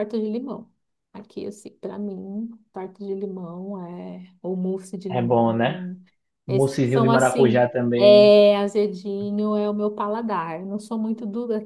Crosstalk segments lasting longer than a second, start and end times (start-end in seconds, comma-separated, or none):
6.5-8.4